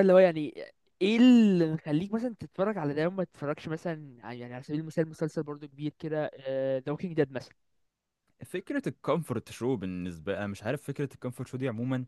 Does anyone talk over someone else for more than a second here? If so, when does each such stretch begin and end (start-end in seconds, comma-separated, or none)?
none